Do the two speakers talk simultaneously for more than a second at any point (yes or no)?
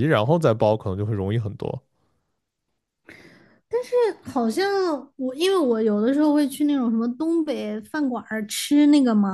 no